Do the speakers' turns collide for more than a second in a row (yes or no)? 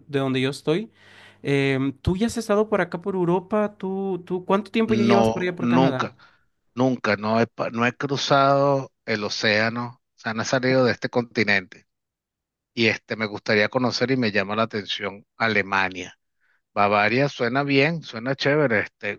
yes